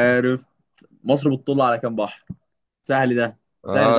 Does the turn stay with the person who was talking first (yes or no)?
no